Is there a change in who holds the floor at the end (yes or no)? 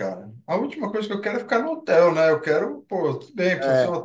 no